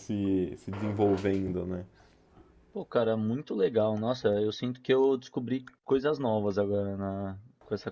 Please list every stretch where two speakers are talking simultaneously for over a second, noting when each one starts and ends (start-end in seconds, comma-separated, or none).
none